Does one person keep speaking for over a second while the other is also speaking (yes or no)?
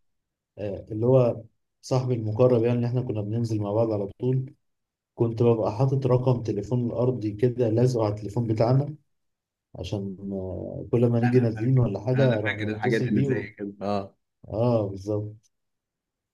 yes